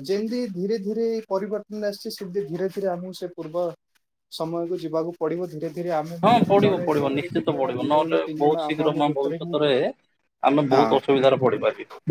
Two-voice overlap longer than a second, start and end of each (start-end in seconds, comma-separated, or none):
6.2-9.5